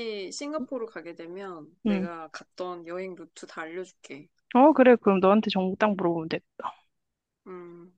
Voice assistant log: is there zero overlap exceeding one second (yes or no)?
yes